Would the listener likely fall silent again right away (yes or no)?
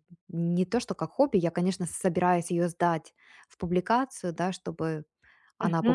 yes